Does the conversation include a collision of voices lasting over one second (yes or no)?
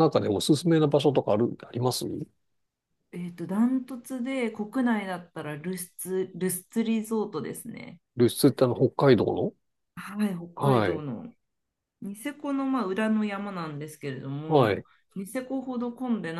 no